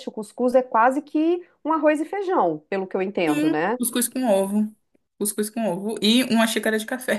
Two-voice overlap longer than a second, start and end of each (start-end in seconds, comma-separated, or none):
none